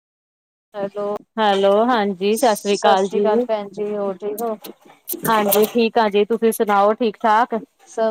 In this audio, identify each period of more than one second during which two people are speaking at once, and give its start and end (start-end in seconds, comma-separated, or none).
none